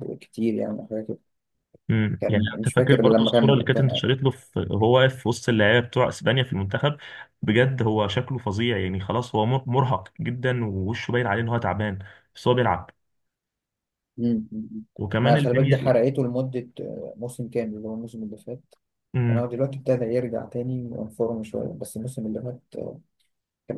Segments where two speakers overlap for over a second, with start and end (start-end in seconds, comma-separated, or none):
2.2-4.0